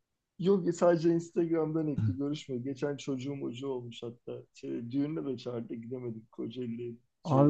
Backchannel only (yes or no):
no